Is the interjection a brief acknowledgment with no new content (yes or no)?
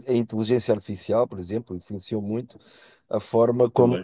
yes